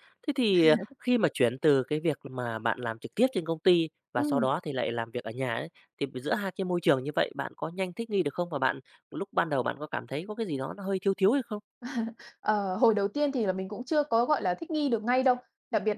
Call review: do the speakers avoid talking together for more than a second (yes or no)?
yes